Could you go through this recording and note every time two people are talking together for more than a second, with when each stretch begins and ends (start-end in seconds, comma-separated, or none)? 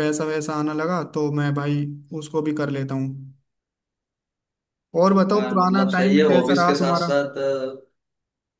5.3-7.1